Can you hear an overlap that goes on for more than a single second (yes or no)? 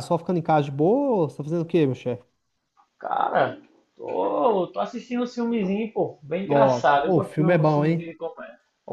yes